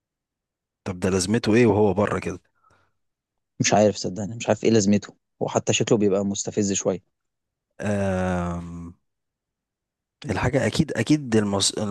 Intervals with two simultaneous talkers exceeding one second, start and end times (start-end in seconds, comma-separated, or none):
none